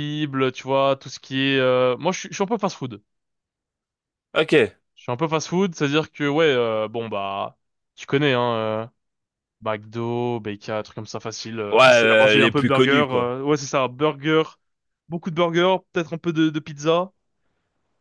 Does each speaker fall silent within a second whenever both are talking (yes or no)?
no